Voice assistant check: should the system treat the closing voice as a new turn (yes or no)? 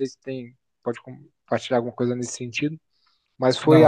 no